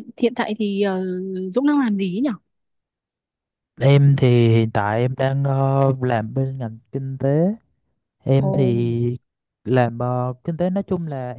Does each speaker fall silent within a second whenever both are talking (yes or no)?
yes